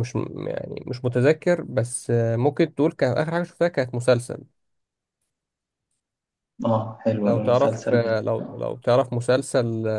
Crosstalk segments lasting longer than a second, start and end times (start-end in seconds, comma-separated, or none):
7.2-8.6